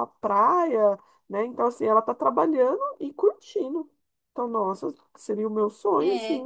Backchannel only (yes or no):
no